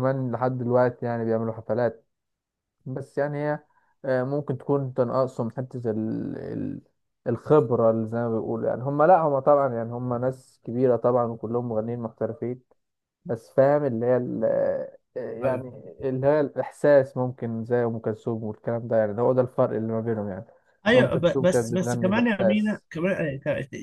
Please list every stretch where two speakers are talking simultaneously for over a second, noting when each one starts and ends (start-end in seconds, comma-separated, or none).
20.9-22.9